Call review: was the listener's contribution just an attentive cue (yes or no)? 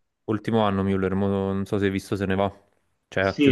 no